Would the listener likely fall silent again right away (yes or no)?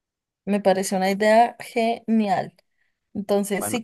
yes